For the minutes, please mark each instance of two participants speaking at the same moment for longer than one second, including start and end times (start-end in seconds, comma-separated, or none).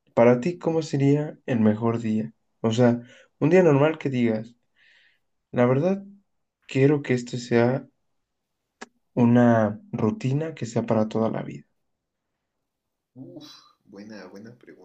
none